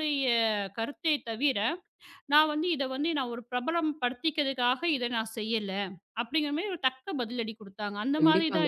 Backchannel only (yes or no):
no